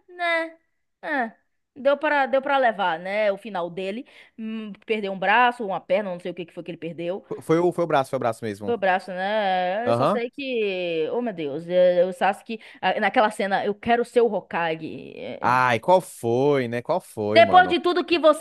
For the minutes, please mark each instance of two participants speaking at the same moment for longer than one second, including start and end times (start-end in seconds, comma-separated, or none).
none